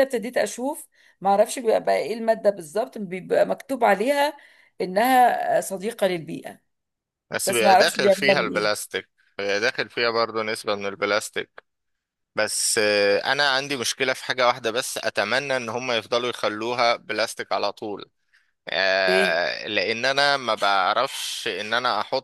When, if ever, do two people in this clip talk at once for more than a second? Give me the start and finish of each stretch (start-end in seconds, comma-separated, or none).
7.5-8.8